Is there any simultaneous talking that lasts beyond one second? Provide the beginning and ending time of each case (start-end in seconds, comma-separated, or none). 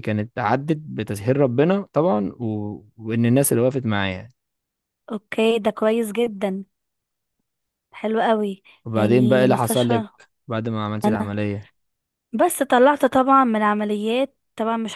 8.9-10.1